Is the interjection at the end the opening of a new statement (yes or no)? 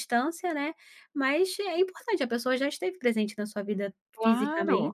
yes